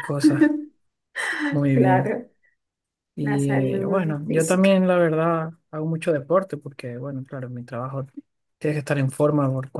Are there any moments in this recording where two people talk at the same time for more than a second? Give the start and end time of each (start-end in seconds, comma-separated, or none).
3.2-4.8